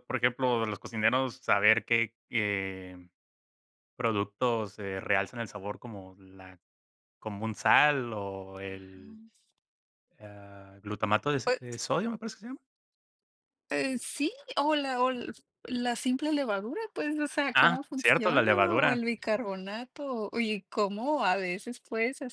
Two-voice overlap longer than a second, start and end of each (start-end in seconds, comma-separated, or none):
17.5-19.0